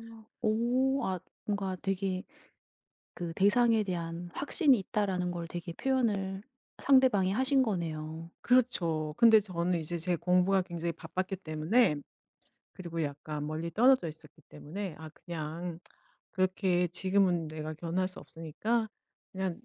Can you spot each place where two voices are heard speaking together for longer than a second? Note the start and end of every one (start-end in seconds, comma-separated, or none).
none